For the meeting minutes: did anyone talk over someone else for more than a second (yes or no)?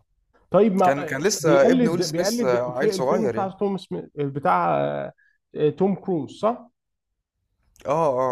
yes